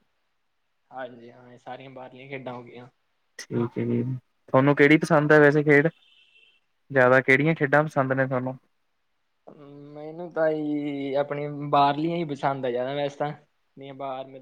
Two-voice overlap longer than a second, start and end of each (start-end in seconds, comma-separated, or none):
none